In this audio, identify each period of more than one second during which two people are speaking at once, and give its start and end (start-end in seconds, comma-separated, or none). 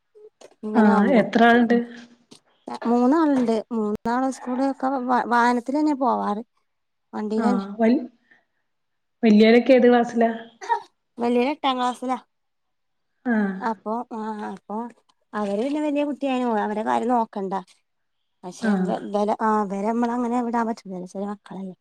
none